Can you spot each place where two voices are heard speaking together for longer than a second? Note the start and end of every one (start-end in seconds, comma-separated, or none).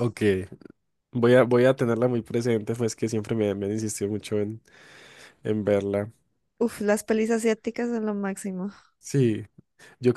none